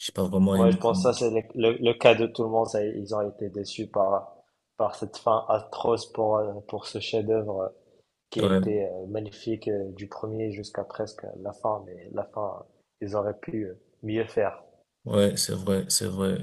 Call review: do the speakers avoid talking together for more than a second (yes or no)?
yes